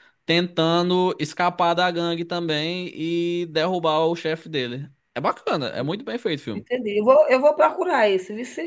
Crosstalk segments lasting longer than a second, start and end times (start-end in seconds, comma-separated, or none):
none